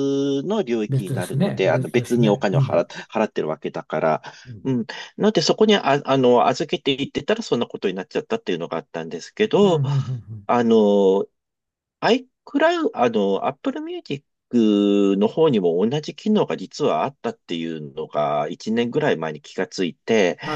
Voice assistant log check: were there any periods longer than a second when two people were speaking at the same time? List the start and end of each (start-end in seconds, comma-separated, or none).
0.9-2.9